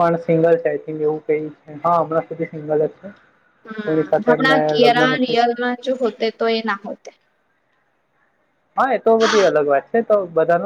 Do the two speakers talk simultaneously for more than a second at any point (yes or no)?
yes